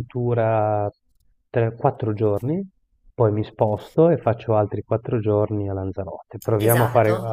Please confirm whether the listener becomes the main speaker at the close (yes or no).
yes